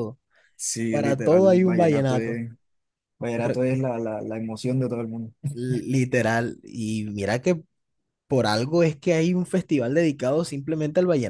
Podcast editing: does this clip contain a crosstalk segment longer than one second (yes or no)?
yes